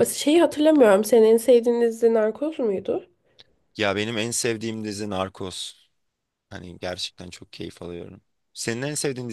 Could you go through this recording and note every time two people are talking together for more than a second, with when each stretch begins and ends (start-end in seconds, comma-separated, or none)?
none